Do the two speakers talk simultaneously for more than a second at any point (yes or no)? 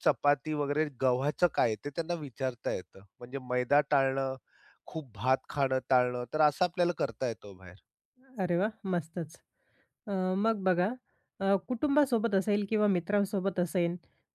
no